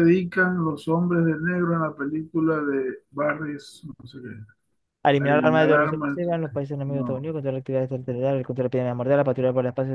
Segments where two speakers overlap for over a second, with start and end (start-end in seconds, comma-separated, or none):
5.2-7.3